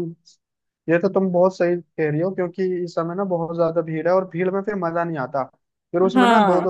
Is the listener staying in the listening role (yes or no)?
yes